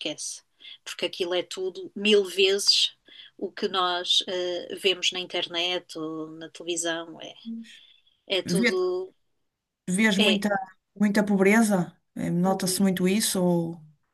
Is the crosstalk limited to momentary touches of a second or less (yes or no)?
yes